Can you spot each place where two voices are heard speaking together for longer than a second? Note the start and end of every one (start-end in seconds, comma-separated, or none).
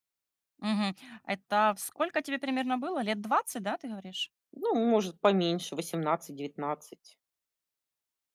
none